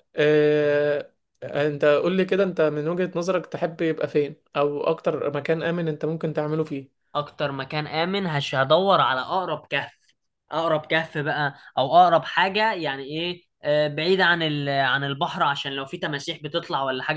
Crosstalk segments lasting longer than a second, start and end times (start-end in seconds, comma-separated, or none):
none